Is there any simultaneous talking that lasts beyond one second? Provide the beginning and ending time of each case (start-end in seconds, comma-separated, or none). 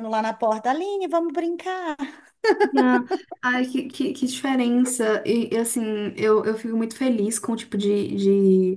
none